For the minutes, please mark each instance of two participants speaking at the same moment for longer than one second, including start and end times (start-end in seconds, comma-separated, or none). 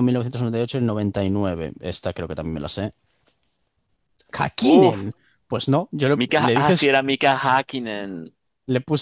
none